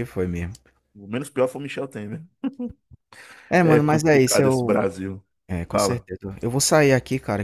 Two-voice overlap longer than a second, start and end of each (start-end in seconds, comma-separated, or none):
3.6-4.8